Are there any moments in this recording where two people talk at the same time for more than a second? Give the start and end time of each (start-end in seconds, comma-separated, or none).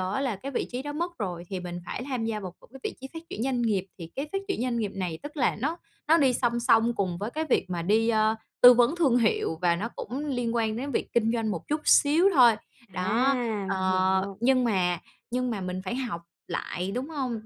12.9-14.4